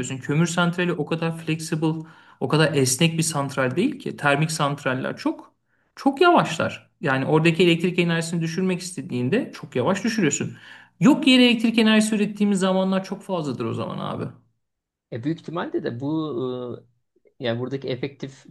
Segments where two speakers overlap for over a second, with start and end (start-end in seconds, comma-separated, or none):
none